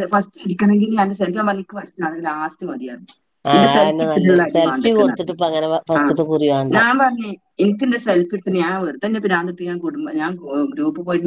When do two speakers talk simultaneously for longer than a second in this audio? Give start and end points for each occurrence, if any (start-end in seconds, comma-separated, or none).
3.5-6.0